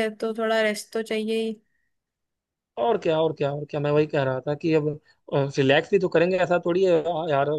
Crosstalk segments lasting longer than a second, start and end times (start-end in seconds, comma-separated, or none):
none